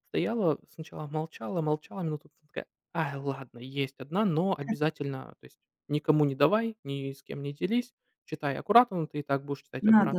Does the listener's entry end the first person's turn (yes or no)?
yes